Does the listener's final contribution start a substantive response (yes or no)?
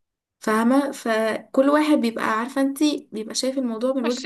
yes